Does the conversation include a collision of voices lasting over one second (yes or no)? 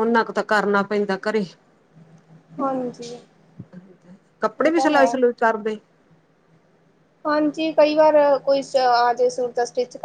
no